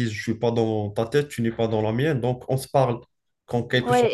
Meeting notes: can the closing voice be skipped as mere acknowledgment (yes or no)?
no